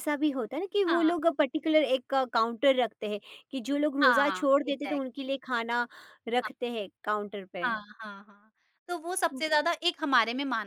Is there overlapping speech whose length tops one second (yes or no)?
yes